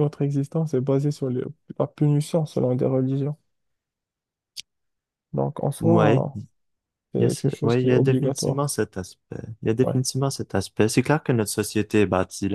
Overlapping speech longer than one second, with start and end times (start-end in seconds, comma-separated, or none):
7.2-8.6